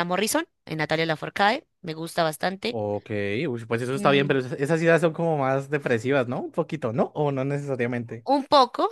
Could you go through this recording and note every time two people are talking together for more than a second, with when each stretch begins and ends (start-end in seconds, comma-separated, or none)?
none